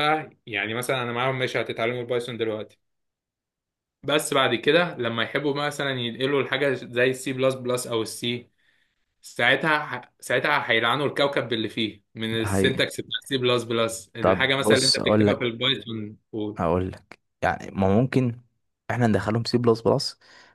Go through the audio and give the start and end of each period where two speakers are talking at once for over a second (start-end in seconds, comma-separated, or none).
14.2-15.5